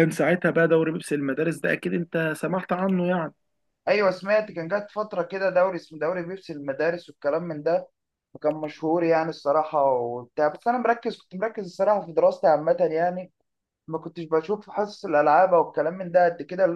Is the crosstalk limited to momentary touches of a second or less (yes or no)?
yes